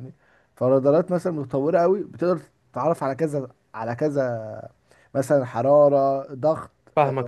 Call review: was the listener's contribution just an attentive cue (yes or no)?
no